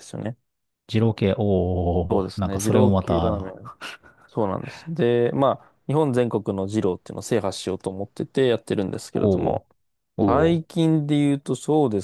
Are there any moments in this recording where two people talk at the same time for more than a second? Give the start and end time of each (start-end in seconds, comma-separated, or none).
2.1-3.5